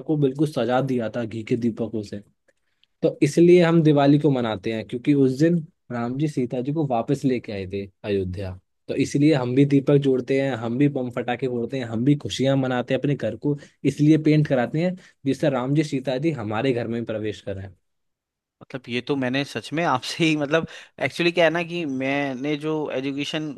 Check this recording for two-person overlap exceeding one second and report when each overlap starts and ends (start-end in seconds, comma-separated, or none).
none